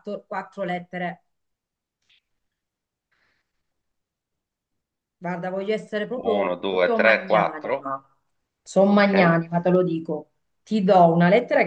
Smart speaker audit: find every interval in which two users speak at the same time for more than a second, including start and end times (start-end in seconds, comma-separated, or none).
6.2-7.9